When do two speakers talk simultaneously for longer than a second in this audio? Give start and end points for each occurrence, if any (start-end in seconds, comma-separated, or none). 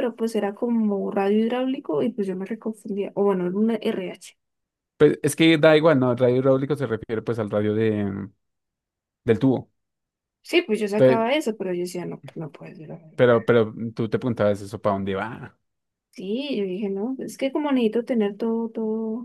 none